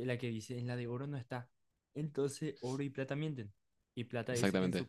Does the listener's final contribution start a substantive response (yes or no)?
no